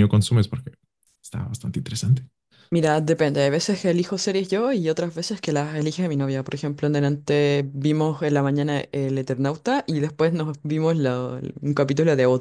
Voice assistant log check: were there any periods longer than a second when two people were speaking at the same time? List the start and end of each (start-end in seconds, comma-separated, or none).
none